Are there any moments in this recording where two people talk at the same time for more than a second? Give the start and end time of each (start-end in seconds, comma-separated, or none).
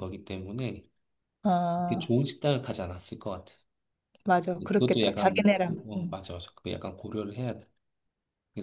4.7-6.2